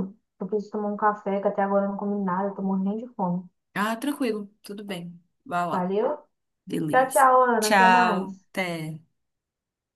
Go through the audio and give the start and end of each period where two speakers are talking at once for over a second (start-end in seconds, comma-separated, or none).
6.9-8.4